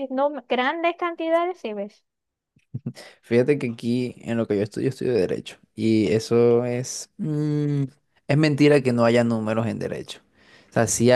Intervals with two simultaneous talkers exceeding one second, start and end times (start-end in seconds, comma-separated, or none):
none